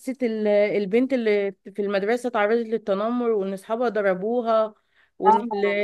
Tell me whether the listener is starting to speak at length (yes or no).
no